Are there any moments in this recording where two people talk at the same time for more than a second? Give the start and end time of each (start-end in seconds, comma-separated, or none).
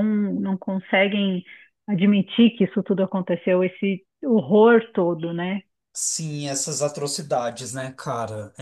none